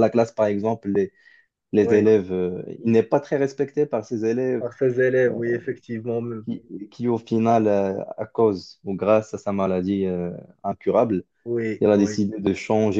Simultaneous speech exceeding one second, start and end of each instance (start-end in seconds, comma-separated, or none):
none